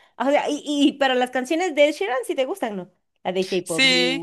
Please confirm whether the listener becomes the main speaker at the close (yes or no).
yes